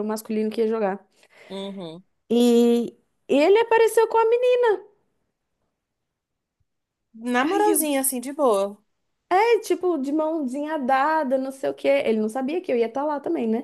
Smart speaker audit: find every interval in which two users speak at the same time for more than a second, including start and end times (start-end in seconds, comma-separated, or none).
none